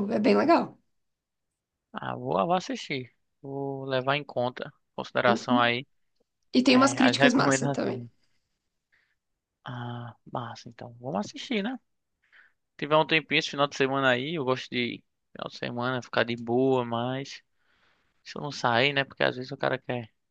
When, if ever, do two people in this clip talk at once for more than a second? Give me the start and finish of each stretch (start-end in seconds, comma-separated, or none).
6.7-8.0